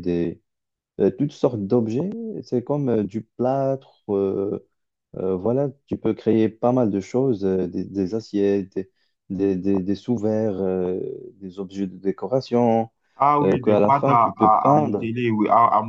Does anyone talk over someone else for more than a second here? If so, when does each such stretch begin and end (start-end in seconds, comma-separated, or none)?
13.4-15.1